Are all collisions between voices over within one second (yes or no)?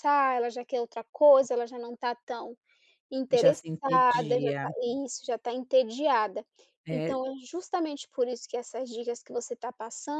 no